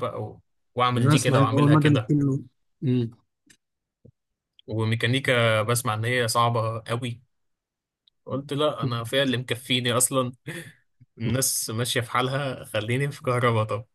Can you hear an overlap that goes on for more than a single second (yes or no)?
yes